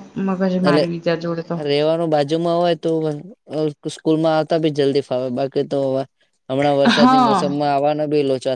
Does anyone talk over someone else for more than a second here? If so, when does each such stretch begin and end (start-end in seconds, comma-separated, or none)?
none